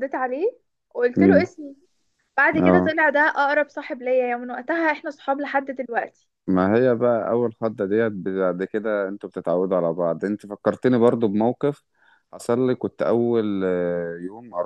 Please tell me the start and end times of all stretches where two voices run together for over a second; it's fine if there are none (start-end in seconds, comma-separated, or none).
none